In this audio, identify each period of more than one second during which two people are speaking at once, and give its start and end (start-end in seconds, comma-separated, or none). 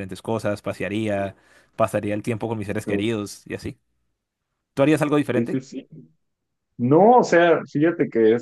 none